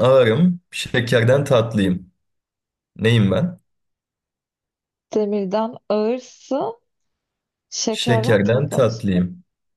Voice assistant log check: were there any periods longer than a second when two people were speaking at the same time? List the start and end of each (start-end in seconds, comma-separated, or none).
7.9-9.1